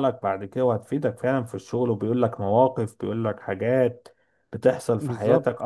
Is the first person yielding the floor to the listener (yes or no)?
no